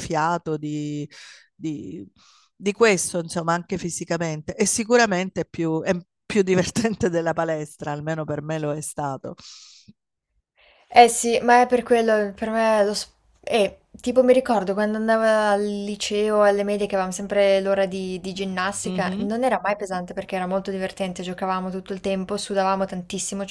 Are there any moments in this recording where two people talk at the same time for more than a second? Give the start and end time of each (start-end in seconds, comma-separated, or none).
none